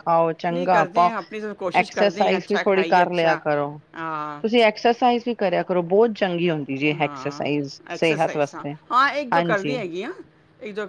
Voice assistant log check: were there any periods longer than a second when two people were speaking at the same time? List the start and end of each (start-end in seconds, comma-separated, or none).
1.9-3.4